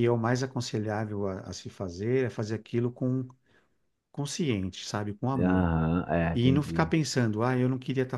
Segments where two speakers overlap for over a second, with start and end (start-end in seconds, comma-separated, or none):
none